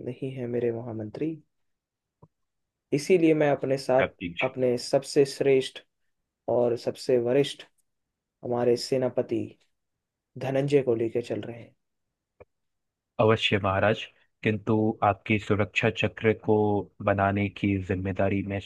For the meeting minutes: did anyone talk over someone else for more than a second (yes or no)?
no